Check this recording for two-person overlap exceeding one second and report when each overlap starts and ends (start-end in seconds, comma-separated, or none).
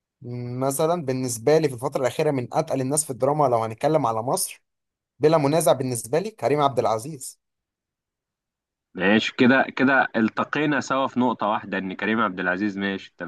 none